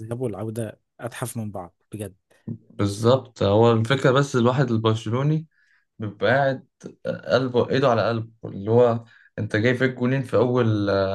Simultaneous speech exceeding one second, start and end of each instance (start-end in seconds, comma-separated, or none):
none